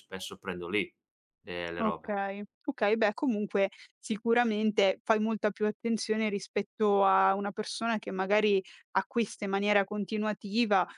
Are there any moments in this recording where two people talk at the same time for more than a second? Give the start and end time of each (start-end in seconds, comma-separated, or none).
none